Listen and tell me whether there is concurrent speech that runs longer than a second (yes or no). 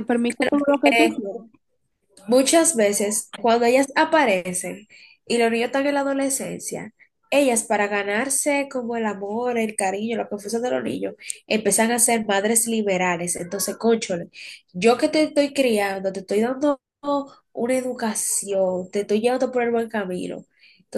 no